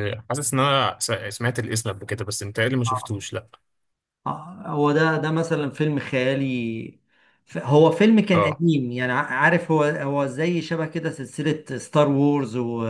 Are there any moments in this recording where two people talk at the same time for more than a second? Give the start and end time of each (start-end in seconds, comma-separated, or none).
none